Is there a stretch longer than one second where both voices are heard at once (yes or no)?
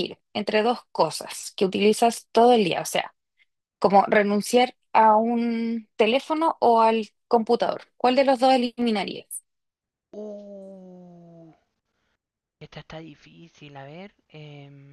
no